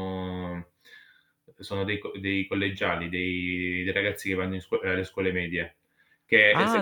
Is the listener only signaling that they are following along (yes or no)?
no